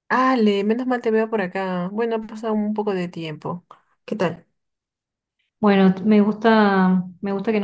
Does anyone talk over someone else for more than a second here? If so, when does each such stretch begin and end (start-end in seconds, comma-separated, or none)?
none